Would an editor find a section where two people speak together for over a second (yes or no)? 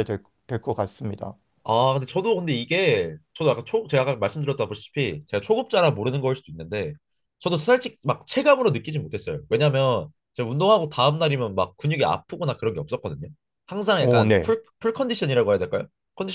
no